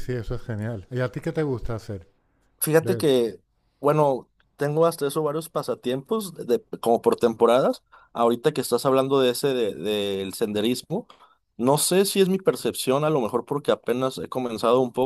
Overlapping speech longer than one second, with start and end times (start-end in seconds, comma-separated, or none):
none